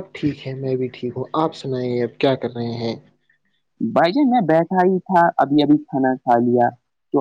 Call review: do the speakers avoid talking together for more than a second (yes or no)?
yes